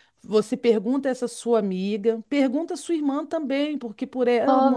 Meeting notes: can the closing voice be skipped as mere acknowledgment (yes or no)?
yes